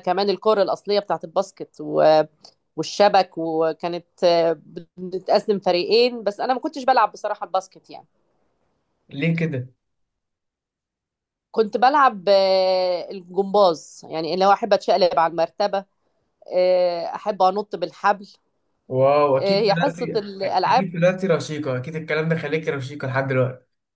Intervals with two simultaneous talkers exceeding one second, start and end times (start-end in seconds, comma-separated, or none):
19.4-20.9